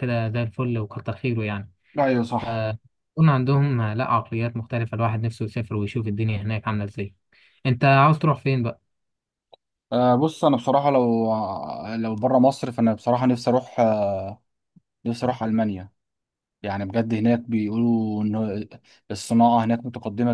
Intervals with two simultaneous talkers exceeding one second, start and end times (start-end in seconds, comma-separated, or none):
none